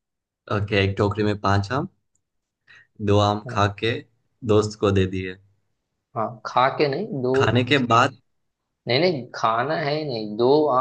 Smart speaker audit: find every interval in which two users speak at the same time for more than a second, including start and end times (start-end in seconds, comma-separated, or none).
none